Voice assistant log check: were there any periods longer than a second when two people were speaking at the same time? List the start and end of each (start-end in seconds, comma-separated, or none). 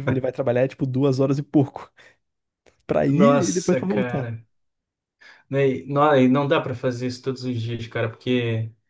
3.1-4.3